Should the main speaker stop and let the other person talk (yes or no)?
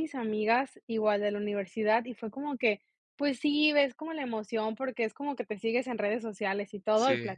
no